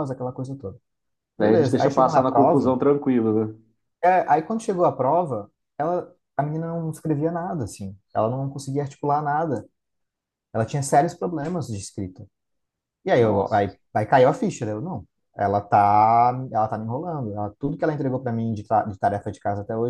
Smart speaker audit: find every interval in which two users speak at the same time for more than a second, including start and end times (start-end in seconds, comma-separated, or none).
1.4-2.7